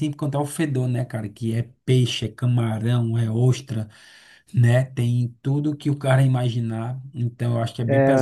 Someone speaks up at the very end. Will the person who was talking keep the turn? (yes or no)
no